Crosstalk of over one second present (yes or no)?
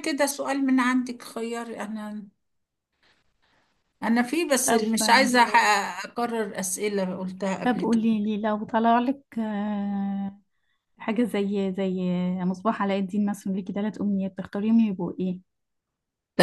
no